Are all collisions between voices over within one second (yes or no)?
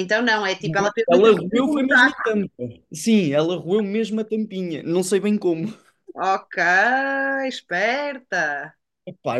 no